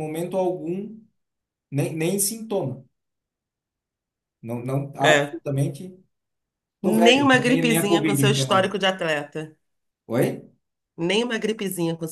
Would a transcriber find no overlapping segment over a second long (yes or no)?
no